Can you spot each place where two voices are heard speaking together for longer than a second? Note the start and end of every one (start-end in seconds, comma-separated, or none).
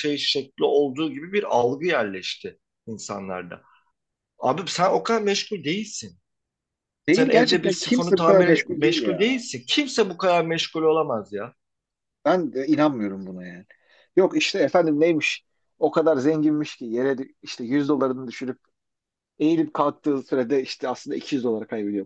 7.1-9.4